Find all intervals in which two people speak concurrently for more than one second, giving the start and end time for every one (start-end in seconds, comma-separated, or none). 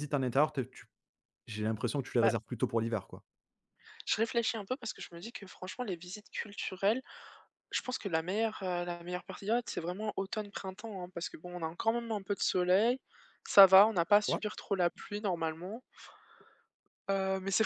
none